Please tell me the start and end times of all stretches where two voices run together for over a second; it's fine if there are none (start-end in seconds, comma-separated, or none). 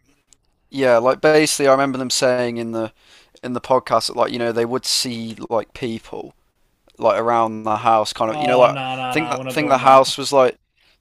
8.3-10.1